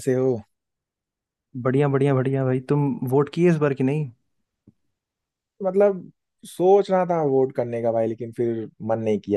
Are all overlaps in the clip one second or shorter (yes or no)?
yes